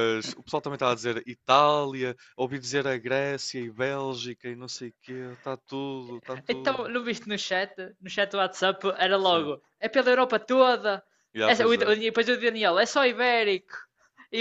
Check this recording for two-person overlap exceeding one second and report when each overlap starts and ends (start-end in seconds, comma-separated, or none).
none